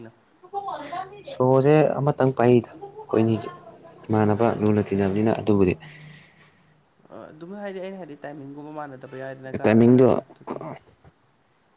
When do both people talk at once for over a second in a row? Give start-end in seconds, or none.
none